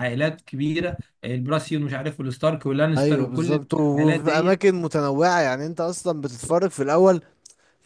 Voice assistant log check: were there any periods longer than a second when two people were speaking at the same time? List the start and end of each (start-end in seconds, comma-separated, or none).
3.0-4.6